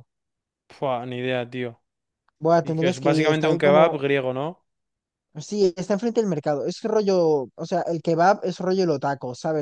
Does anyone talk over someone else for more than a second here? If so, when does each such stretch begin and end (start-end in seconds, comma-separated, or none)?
2.6-4.0